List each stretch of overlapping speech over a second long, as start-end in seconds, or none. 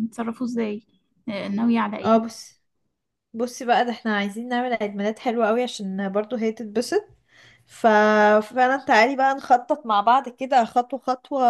none